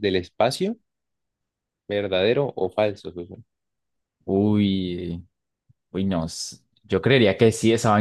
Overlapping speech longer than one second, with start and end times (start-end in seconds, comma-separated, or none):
none